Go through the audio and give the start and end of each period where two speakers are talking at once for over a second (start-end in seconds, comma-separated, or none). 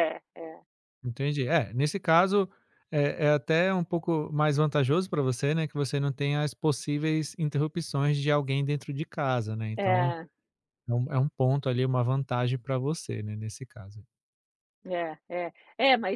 none